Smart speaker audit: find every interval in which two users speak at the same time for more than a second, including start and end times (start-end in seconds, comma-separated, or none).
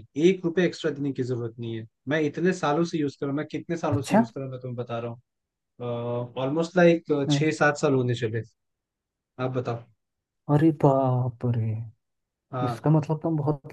none